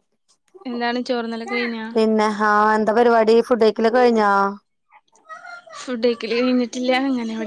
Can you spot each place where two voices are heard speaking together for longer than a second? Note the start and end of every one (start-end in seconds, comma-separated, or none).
none